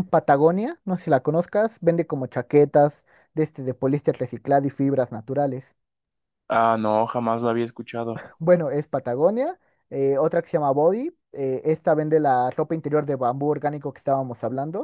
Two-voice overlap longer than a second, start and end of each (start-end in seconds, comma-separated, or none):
none